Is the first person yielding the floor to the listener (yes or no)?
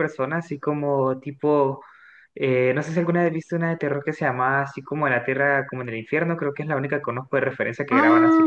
yes